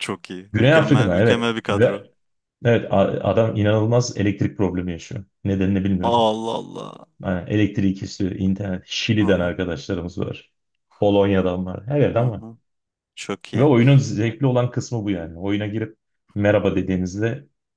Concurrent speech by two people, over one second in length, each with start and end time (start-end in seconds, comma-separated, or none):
0.5-2.1